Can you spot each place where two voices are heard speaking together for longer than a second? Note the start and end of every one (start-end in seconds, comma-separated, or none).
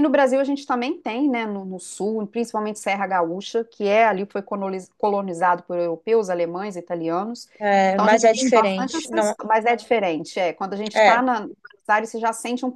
7.9-9.3